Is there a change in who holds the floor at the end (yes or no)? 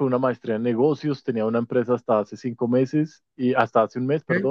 no